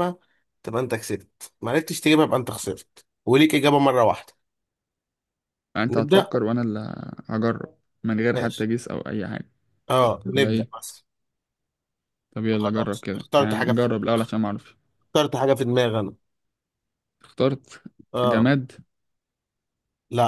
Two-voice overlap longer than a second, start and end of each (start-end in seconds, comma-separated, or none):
12.5-13.9